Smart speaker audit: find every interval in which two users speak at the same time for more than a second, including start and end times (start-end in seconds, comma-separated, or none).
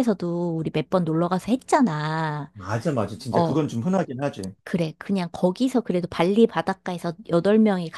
none